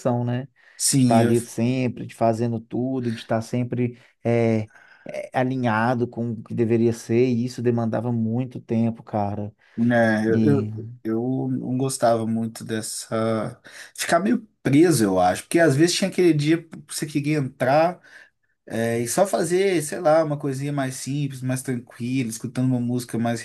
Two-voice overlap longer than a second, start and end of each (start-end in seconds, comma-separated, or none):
none